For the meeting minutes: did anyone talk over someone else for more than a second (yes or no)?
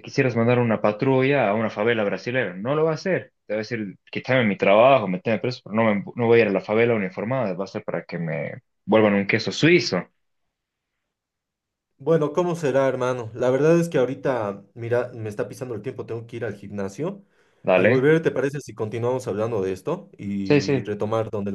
no